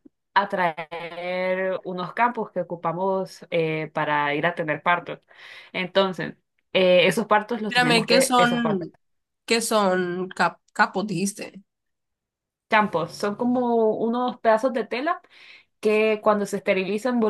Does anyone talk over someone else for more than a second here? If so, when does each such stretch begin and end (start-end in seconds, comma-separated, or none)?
7.7-8.9